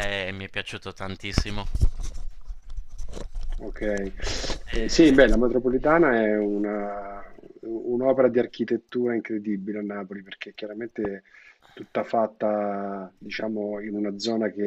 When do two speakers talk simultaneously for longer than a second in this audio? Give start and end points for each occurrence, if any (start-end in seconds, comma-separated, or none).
none